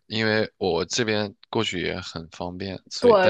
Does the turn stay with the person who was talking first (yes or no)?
no